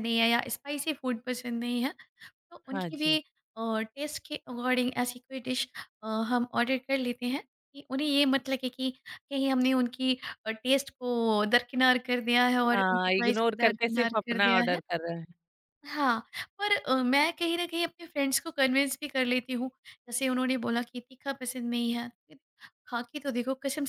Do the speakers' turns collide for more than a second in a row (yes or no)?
yes